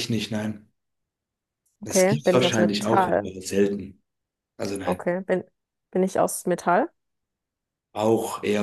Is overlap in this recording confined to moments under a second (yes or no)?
no